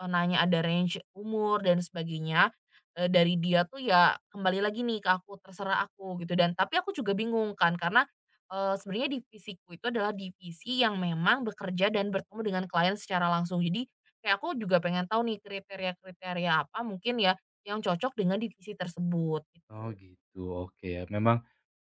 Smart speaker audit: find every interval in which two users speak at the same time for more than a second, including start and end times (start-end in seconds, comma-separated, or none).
none